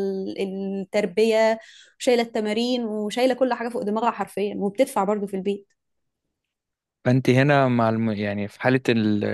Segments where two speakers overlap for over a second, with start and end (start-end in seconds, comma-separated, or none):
none